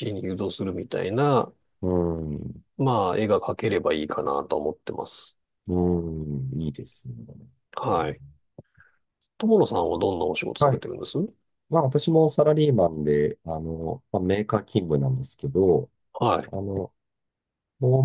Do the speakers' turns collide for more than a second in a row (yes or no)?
no